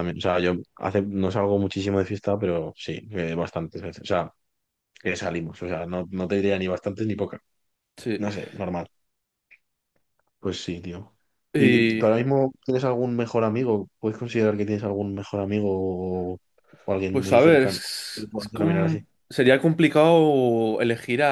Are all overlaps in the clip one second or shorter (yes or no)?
no